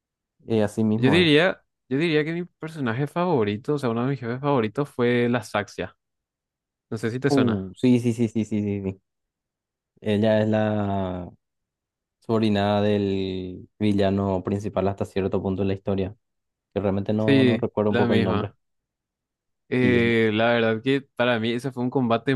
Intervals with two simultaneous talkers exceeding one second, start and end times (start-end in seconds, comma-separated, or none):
17.2-18.5